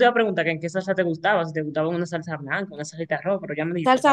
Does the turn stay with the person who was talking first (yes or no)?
no